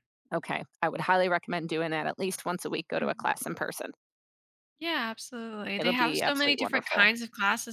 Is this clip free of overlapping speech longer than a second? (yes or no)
no